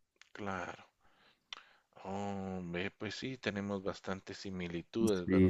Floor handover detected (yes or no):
yes